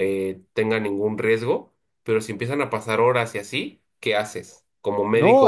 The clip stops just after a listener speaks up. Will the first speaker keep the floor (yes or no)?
no